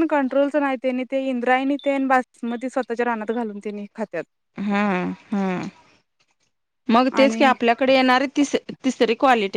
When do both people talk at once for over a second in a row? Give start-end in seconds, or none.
none